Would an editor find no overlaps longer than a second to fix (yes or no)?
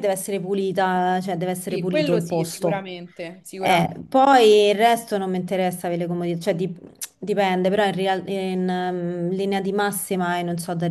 no